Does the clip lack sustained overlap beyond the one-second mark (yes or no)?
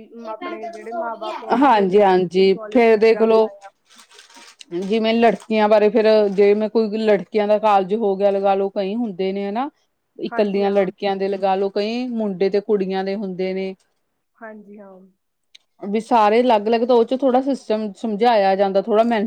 no